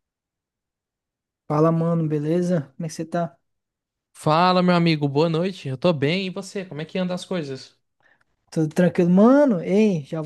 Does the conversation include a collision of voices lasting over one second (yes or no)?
no